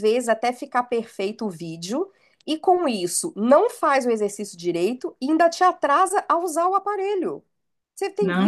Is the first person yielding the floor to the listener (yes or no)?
yes